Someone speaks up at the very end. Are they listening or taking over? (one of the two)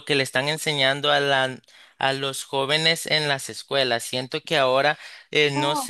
listening